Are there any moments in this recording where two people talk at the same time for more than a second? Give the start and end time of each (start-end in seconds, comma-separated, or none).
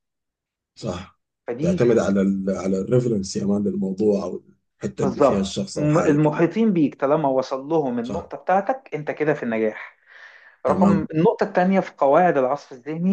5.0-6.3